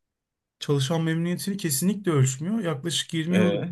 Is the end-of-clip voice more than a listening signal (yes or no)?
no